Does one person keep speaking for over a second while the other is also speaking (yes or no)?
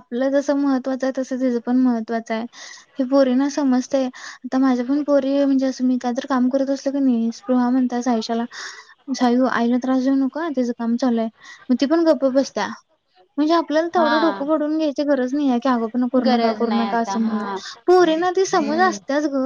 yes